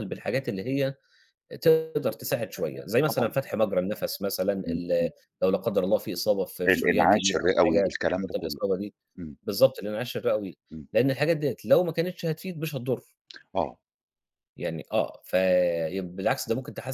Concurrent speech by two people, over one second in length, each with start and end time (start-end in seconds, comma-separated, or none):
6.7-8.6